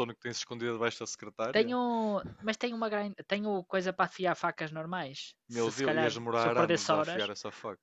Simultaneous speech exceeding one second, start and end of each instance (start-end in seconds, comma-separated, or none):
5.6-7.2